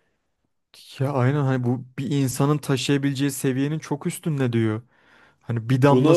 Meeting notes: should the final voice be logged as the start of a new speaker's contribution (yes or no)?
no